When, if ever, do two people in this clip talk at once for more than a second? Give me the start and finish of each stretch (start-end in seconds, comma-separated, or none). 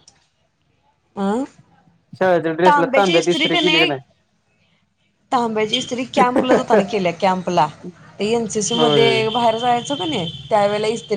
2.7-3.9